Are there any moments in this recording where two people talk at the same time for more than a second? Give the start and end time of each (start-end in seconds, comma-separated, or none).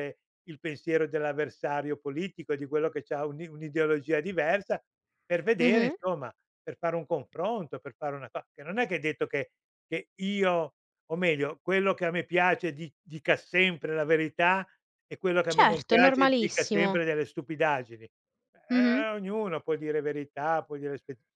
15.5-17.0